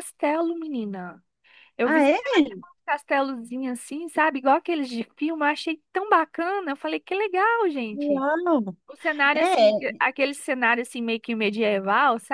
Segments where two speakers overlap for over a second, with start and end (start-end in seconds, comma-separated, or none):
none